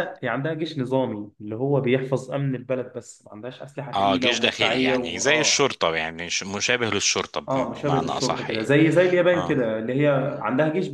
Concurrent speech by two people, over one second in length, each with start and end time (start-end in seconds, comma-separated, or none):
3.9-5.7, 7.5-8.7